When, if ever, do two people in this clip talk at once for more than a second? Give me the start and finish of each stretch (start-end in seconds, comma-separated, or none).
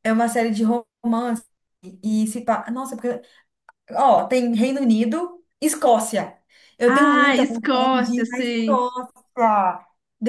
6.9-8.8